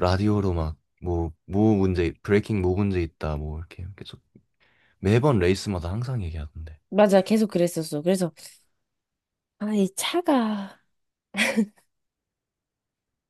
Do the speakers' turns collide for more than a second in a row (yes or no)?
no